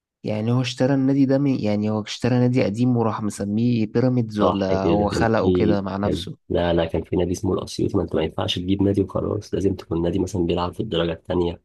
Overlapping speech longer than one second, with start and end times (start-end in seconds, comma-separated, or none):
4.4-6.4